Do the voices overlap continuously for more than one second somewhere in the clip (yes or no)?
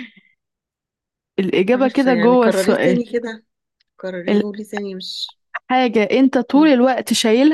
yes